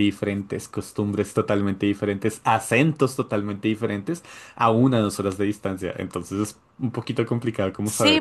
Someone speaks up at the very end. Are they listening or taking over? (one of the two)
taking over